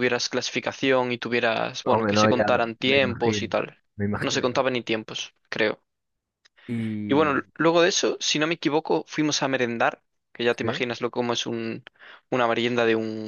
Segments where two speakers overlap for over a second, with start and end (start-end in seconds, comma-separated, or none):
1.9-3.5